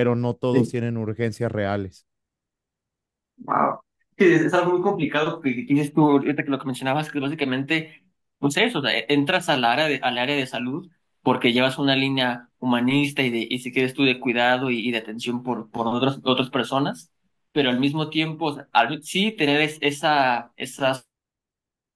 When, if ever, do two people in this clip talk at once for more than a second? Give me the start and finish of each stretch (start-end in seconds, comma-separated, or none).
none